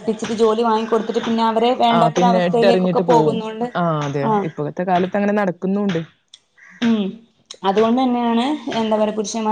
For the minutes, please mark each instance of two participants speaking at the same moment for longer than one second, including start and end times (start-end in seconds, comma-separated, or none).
2.0-3.4